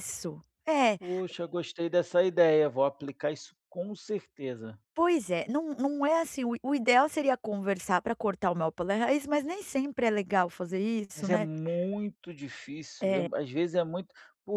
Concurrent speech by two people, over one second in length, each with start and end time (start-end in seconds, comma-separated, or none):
none